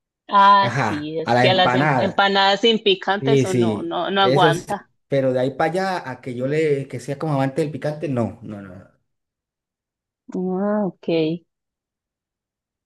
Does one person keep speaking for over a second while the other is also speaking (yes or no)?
yes